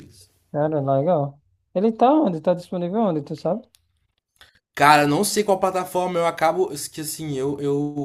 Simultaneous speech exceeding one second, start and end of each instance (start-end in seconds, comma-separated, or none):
none